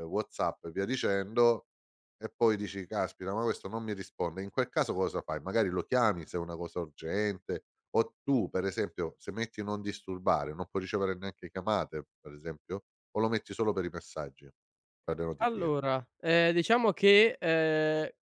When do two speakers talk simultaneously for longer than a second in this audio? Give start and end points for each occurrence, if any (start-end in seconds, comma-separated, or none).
none